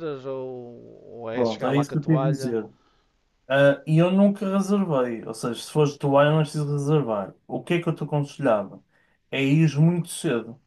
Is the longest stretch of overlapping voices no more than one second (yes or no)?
no